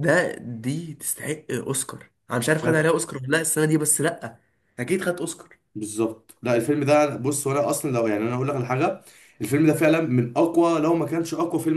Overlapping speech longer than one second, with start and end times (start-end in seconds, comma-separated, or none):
none